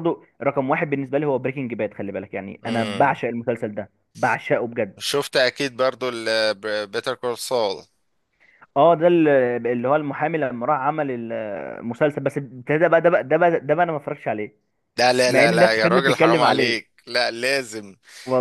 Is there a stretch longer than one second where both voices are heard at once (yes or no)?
yes